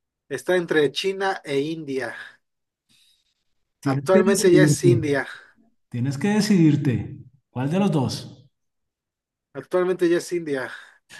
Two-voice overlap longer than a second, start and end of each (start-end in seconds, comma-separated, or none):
3.8-5.0